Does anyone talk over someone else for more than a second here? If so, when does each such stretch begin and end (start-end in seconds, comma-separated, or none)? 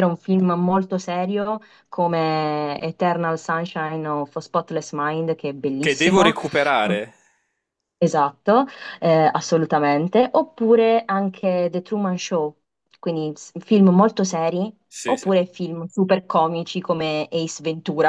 none